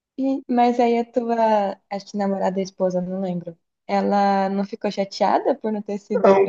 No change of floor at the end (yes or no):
no